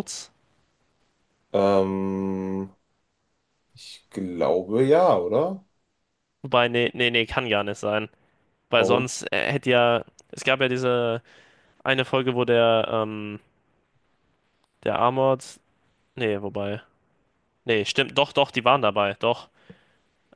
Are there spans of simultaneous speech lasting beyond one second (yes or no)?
no